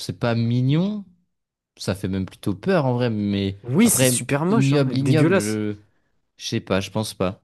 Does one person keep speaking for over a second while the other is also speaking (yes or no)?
yes